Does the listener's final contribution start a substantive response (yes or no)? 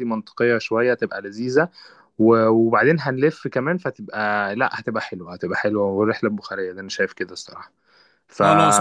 yes